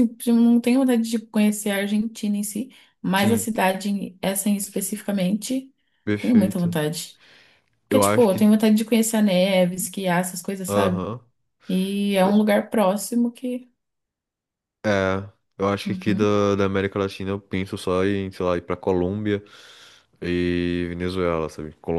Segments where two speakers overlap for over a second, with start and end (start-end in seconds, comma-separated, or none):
none